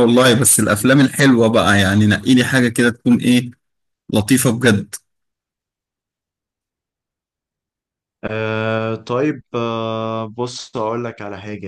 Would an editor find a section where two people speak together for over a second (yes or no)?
no